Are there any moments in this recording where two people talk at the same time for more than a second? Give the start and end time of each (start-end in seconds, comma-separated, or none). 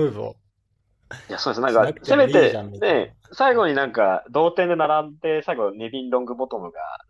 1.6-3.0